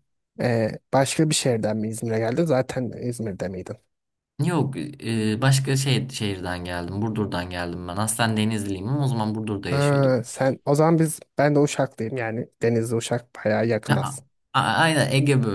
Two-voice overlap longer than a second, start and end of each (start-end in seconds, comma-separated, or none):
none